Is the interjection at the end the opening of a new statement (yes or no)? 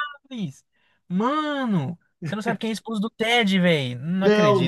yes